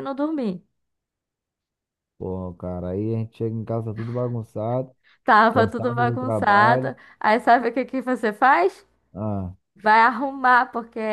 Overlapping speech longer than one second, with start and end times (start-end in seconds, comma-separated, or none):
5.5-6.9